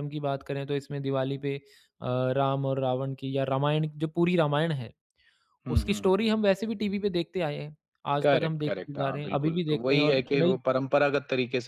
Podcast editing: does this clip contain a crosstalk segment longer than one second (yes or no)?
yes